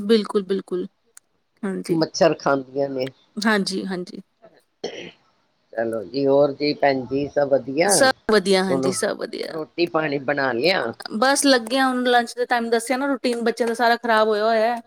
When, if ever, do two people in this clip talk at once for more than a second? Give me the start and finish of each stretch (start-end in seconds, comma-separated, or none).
none